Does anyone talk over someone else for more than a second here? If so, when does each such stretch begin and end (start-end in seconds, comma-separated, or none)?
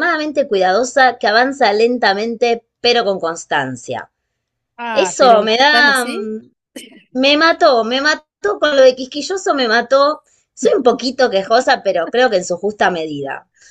4.9-6.3